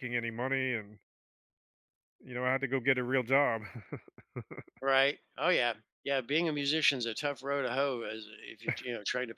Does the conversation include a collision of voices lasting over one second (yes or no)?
no